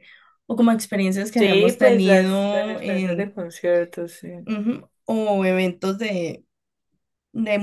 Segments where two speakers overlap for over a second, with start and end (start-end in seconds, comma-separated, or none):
1.4-3.3